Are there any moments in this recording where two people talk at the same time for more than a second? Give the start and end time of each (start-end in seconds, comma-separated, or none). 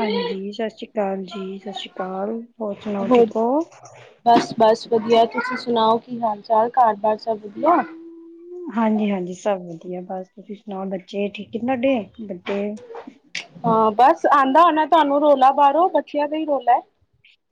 none